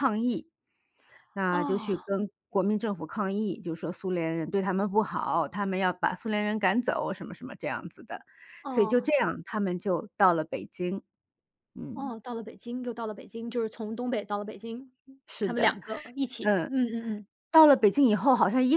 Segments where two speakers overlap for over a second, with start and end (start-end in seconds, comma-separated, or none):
none